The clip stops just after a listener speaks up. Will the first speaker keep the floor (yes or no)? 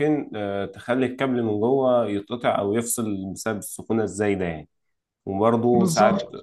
yes